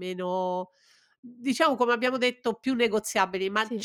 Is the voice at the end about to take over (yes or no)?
no